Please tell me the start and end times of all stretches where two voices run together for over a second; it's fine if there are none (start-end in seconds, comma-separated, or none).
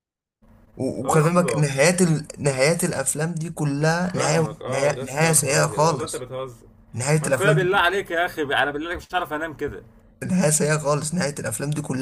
4.1-6.3